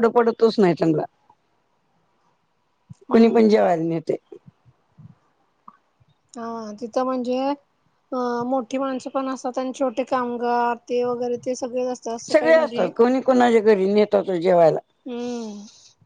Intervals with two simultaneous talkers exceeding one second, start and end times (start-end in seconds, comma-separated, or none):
none